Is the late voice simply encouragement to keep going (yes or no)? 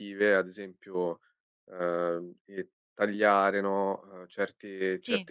yes